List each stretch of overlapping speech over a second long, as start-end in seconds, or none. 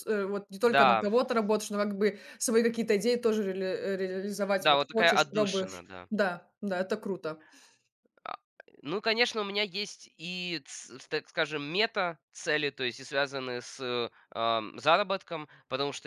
4.6-6.1